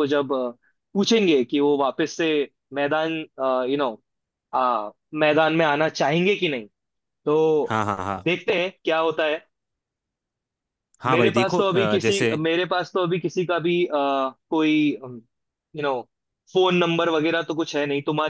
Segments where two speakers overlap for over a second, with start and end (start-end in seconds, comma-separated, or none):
11.1-12.3